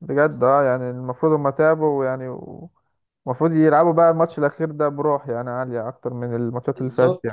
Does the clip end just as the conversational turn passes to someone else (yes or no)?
yes